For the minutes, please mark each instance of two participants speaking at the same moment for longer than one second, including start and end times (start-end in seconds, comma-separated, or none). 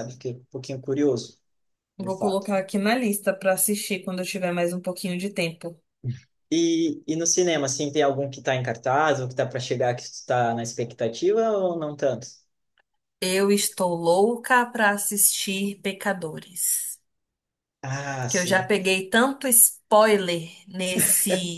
none